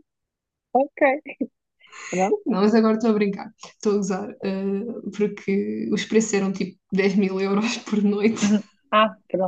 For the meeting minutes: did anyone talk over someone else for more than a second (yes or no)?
no